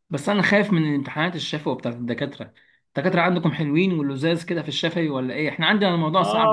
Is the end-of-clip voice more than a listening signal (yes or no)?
yes